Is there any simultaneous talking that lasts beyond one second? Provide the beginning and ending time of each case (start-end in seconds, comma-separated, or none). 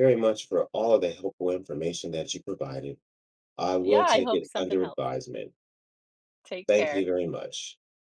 3.8-5.1